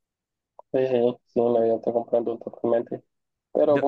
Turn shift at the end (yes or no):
no